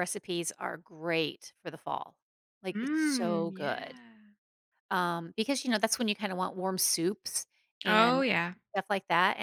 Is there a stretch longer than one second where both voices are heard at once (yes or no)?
yes